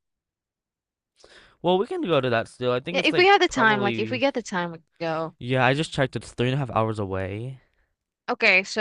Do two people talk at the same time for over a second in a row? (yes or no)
yes